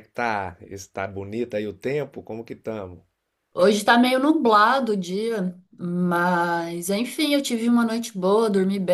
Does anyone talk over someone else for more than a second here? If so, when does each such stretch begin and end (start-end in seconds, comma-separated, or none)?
none